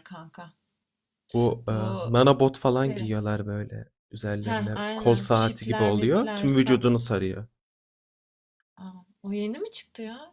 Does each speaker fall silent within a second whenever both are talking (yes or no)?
no